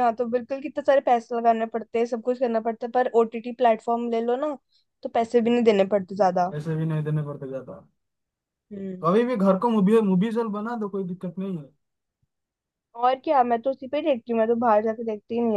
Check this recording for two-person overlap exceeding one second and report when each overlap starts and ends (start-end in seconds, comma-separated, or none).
none